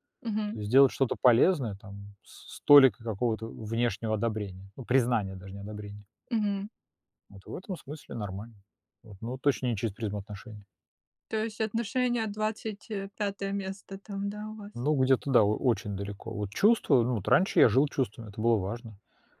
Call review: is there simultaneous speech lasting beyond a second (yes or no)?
no